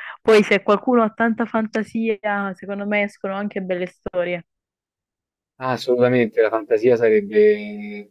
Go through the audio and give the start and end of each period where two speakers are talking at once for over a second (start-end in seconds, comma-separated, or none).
none